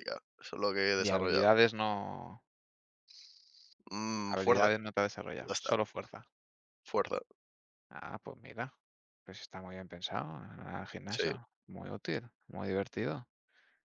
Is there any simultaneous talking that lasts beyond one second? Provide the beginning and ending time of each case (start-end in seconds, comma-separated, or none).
none